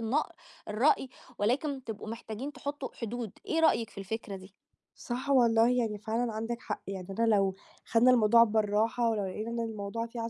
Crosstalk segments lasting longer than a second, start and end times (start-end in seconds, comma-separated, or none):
none